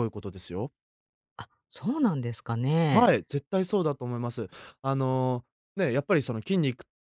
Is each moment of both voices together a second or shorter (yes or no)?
yes